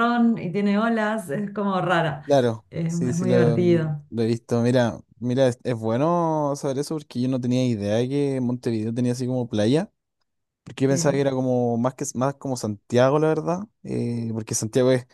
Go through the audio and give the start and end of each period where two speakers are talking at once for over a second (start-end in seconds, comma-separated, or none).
2.7-4.0